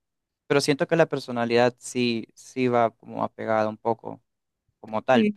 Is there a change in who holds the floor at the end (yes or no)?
no